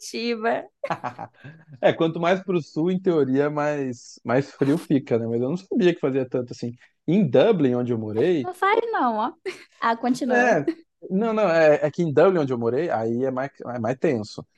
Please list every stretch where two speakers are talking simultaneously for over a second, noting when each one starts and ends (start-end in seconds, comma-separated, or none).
none